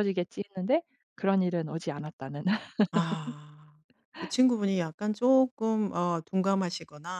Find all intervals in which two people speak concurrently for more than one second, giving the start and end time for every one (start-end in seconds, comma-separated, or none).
none